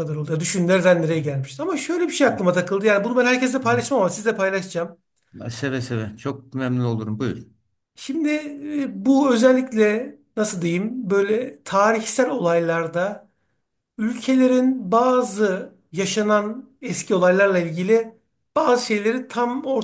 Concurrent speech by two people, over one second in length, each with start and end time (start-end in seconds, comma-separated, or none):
none